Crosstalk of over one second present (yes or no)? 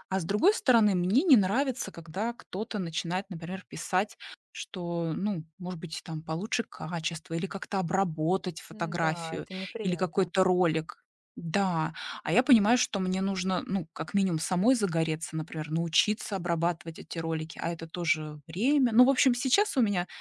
yes